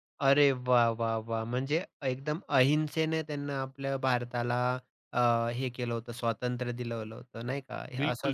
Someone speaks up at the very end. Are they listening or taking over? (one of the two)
taking over